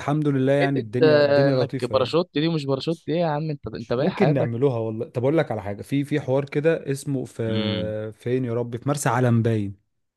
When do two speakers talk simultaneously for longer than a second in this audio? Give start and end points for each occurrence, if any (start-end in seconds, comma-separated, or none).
0.6-2.2